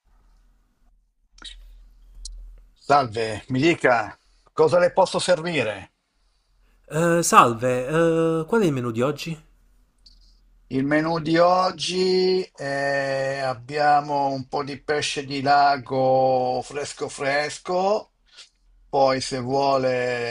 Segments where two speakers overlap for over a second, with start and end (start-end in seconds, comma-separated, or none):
none